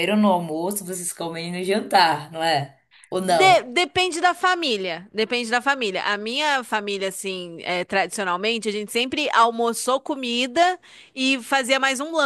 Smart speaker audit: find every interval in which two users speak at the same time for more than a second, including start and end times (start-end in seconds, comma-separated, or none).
none